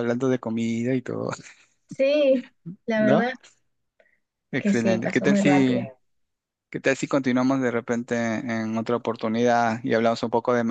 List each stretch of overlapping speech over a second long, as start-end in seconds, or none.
4.6-5.8